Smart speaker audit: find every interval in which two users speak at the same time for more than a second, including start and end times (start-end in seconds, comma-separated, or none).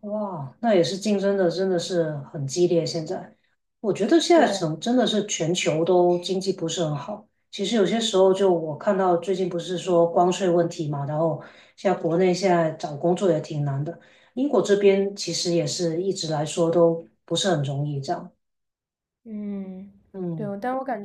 none